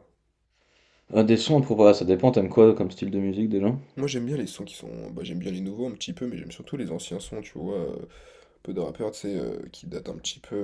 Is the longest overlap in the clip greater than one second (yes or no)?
no